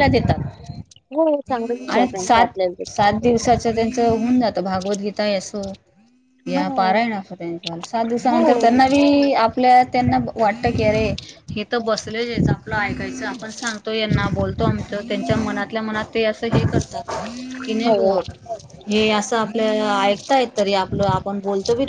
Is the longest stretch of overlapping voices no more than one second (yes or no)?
yes